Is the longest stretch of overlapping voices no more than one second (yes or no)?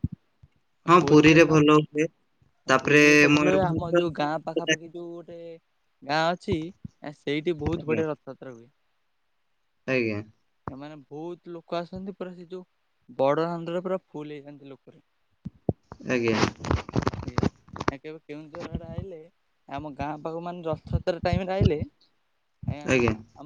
no